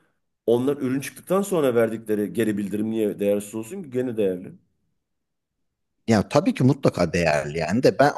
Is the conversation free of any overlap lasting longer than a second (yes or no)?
yes